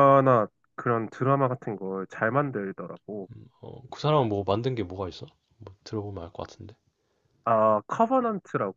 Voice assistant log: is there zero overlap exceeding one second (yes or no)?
yes